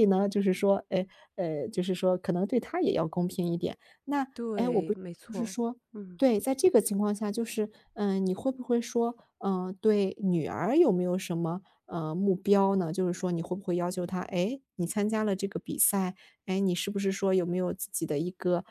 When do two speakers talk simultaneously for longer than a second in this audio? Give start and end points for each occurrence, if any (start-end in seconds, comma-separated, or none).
none